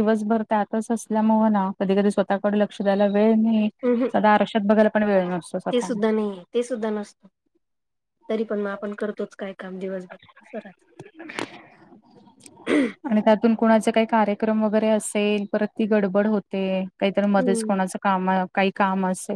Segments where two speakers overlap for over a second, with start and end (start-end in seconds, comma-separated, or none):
none